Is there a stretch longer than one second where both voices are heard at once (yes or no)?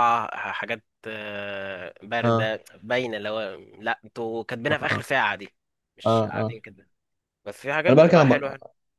no